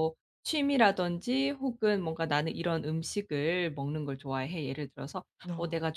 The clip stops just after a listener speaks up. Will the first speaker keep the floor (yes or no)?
yes